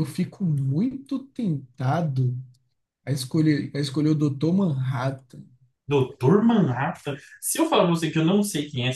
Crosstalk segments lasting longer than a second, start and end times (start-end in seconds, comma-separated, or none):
none